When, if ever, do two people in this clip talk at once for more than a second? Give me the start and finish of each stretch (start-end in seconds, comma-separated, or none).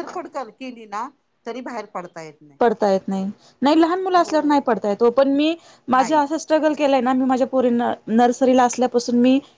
none